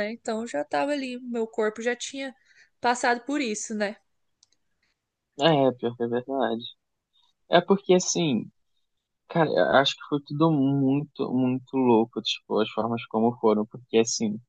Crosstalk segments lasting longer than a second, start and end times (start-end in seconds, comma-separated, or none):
none